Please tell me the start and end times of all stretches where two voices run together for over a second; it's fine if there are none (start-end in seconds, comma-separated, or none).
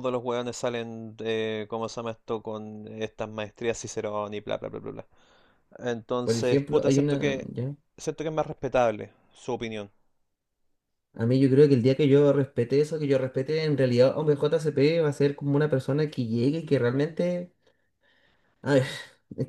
6.2-7.5